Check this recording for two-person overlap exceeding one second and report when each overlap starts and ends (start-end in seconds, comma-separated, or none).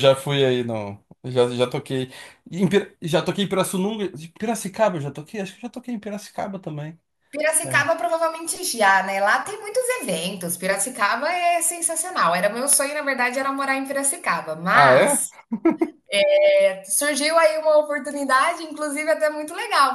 none